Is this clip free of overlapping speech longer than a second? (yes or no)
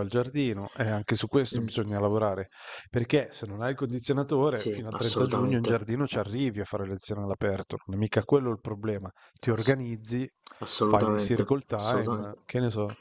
no